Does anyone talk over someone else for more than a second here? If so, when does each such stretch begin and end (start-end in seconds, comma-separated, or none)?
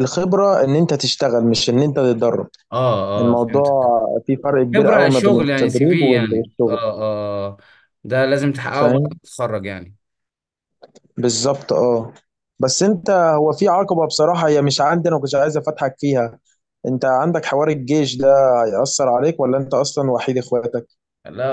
4.7-6.8